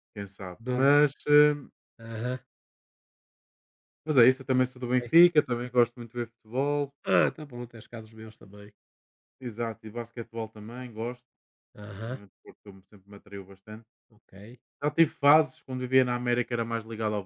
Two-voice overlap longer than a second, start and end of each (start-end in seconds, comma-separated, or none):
none